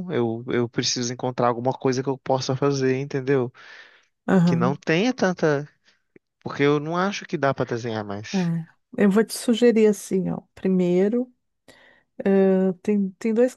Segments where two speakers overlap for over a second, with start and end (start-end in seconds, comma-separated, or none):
none